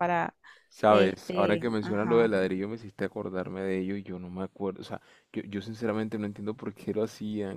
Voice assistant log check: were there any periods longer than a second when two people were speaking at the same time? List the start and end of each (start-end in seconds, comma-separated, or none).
0.9-2.3